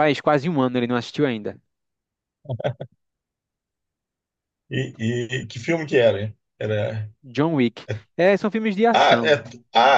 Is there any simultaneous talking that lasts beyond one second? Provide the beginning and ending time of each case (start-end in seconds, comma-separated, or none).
none